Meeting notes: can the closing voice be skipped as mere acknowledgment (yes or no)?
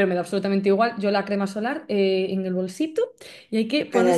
yes